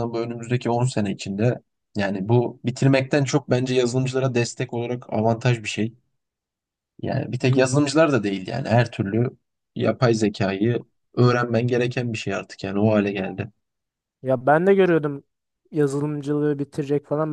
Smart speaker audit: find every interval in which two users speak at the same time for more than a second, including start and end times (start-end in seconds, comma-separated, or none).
none